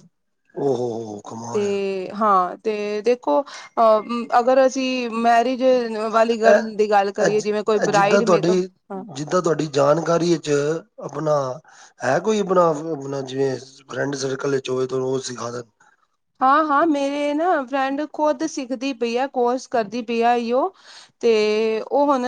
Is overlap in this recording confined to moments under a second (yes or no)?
yes